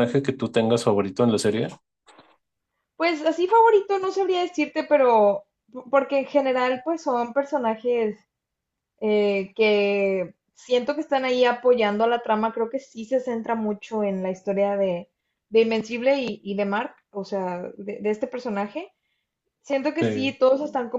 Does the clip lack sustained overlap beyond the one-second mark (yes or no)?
yes